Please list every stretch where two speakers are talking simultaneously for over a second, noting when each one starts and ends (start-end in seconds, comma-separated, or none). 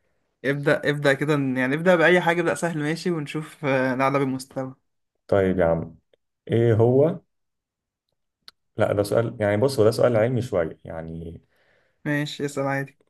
none